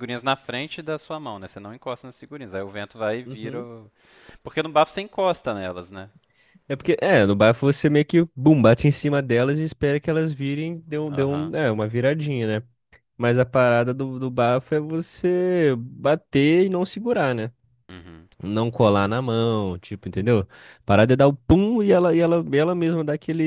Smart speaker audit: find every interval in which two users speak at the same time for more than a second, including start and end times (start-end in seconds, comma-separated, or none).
none